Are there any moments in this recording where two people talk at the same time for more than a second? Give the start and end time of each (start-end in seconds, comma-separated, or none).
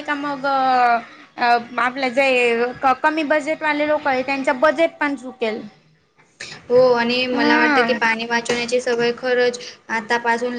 none